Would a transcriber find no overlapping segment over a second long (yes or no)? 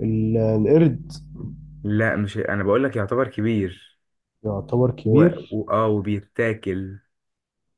yes